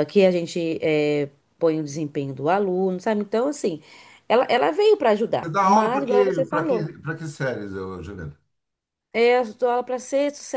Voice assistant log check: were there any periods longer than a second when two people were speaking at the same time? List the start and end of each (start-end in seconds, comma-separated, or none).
5.4-6.9